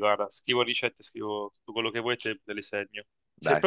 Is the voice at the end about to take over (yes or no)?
no